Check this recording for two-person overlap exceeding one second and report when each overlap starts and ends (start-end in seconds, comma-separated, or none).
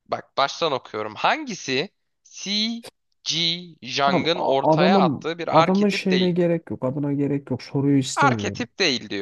4.1-6.4